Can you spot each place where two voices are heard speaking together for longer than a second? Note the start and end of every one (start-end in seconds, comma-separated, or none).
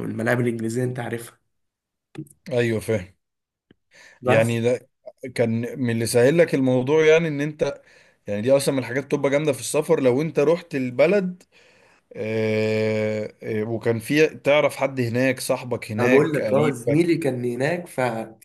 16.0-17.2